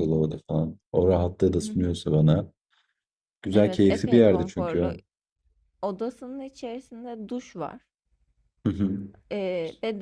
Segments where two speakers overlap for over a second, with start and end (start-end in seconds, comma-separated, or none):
3.5-4.9